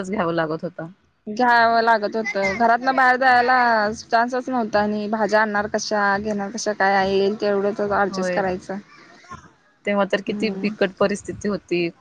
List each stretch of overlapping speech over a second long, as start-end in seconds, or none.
none